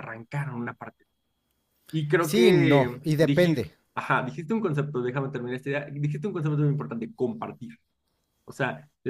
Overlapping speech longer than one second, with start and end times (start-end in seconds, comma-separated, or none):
2.2-3.7